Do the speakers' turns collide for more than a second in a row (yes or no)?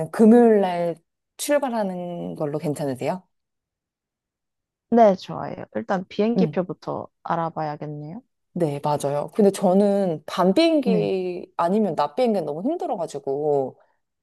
no